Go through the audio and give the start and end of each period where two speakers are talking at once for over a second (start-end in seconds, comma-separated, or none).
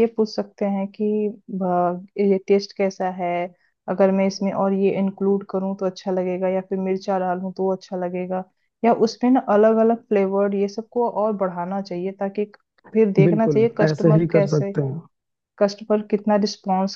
13.2-14.7